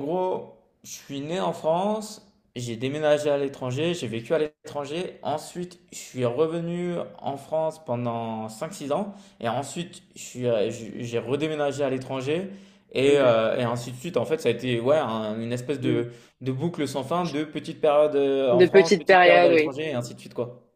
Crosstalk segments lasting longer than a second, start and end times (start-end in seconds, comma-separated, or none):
18.5-19.7